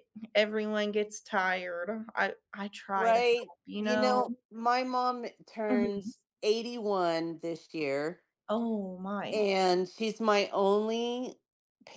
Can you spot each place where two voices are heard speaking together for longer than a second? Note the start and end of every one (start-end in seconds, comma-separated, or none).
2.9-4.2